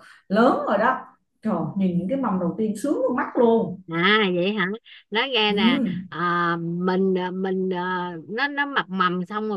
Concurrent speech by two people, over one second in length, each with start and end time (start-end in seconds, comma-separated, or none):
none